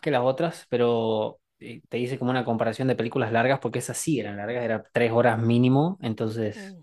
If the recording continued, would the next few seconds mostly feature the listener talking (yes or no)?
no